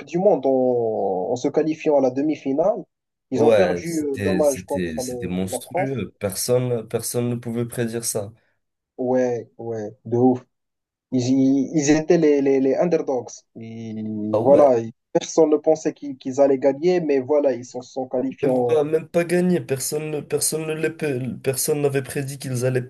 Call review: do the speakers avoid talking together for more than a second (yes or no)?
no